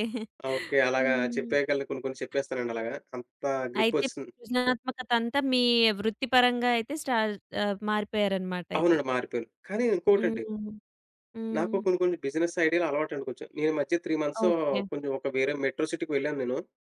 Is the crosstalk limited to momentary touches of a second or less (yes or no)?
yes